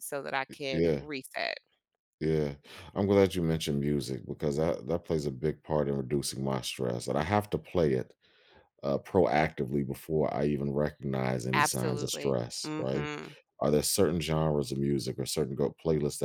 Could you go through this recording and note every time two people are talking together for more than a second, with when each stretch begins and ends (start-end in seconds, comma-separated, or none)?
11.5-13.1